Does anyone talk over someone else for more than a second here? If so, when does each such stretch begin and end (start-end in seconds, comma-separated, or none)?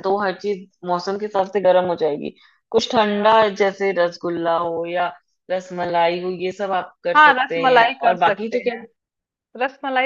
7.2-8.8